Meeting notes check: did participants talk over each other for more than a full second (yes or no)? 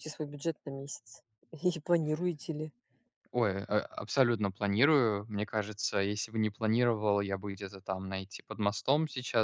no